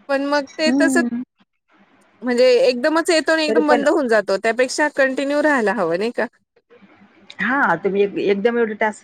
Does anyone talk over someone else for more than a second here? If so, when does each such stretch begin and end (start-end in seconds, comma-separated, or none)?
none